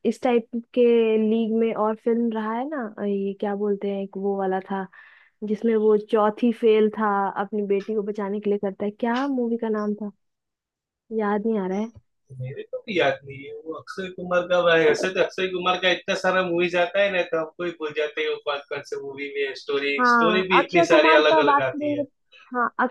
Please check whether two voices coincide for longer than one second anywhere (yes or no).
yes